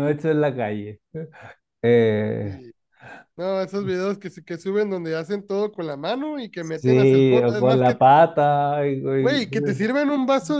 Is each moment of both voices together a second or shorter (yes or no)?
no